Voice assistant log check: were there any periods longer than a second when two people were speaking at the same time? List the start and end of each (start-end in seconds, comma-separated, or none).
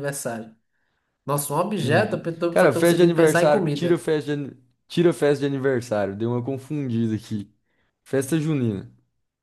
1.8-4.0